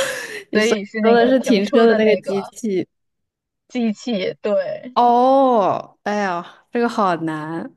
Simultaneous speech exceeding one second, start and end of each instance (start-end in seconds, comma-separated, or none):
0.5-2.5